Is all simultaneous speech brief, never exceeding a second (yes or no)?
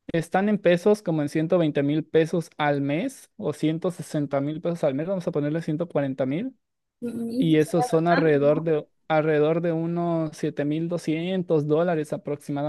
no